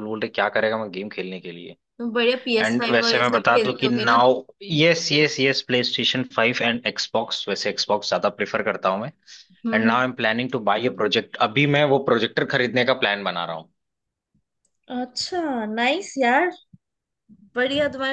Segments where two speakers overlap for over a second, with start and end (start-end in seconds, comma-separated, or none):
2.6-4.2